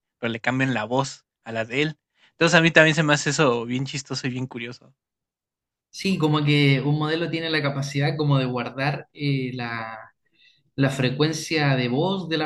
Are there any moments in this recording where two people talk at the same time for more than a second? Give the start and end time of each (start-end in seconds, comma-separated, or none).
none